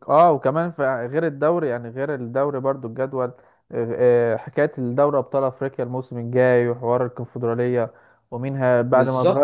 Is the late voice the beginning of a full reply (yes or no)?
no